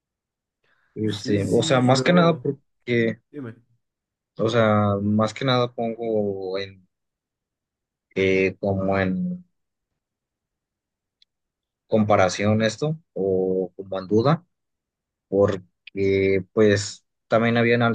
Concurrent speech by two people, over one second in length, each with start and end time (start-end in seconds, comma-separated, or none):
1.0-2.4